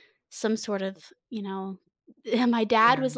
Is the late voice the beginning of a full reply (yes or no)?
no